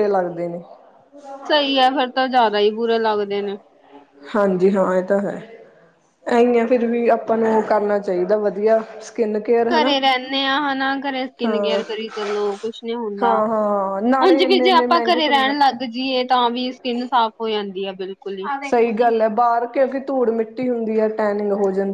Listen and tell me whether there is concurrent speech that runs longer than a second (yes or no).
yes